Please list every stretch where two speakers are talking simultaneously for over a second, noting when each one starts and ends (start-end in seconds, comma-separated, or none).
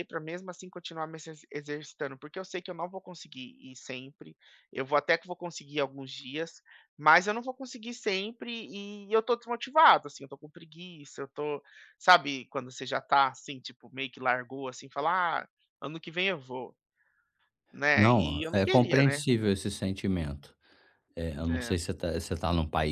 17.9-19.2